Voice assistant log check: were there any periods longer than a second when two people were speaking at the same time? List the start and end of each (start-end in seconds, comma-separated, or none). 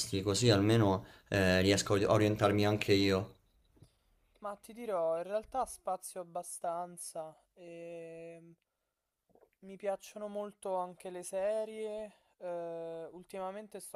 none